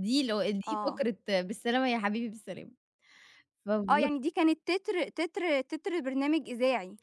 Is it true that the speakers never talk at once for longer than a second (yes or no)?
yes